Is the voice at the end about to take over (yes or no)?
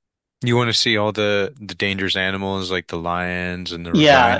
yes